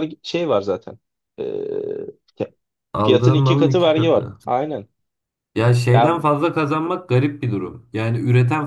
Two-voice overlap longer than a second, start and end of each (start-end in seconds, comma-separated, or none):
3.0-4.4